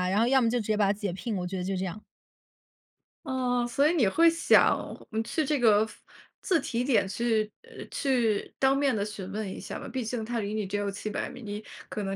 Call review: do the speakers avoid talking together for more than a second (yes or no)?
yes